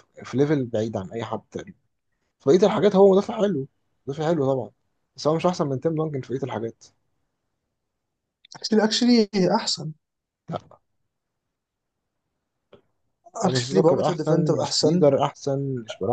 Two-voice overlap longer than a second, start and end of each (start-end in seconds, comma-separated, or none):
13.4-15.1